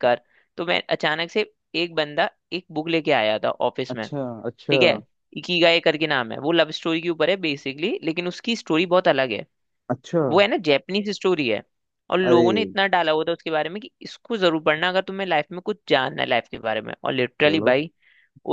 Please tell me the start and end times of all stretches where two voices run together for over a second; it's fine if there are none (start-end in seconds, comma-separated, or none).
none